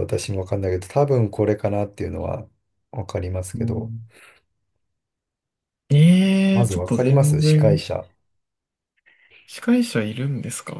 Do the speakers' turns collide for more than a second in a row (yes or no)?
yes